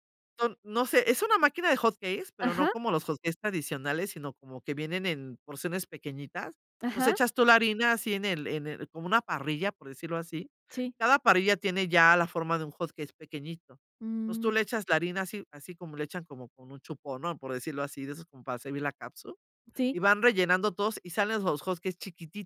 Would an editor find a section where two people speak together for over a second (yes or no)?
no